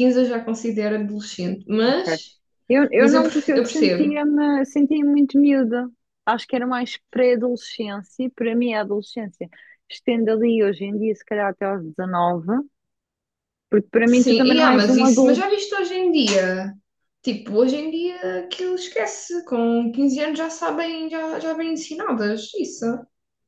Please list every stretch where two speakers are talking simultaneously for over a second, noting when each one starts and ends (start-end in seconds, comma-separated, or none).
3.0-4.2, 14.1-15.5